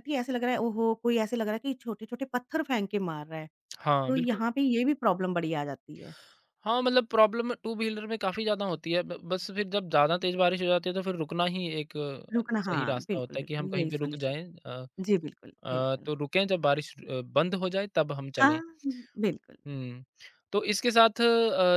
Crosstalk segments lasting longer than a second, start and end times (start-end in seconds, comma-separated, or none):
12.3-14.3